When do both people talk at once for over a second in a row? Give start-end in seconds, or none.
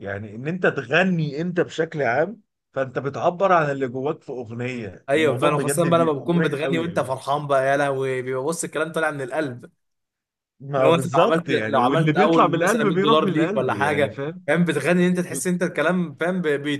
5.1-7.2, 10.8-14.5